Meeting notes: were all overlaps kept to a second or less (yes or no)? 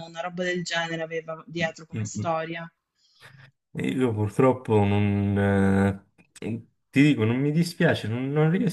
yes